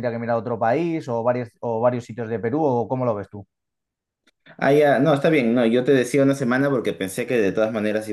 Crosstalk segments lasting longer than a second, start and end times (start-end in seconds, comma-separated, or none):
none